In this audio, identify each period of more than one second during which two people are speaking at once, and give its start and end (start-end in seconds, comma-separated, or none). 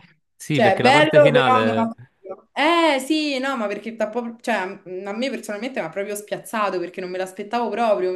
0.5-1.9